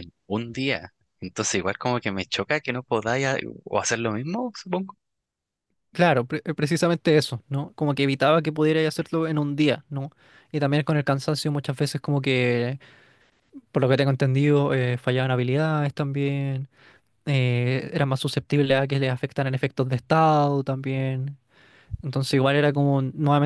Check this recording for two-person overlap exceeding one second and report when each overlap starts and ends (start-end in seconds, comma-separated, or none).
none